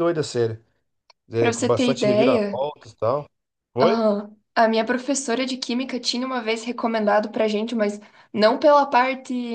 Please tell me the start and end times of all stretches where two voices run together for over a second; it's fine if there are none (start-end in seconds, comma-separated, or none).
1.4-2.6